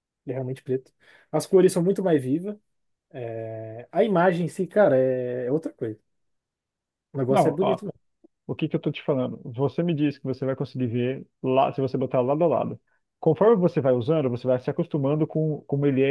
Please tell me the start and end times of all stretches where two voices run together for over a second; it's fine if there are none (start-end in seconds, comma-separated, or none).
none